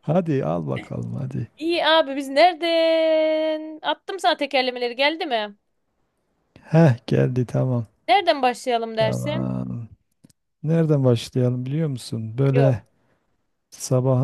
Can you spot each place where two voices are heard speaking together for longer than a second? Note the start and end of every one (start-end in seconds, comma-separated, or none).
none